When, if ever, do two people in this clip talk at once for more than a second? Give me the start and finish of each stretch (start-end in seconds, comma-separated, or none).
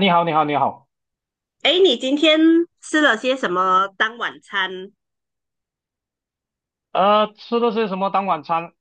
none